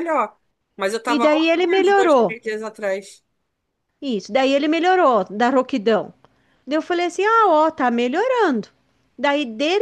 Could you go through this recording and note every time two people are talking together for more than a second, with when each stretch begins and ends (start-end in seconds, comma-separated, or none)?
1.1-2.4